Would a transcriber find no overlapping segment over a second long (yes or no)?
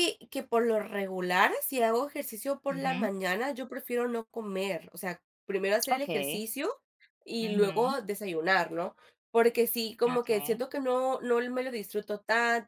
yes